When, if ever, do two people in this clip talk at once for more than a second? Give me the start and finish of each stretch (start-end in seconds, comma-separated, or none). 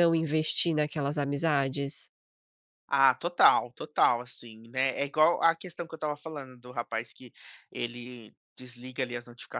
none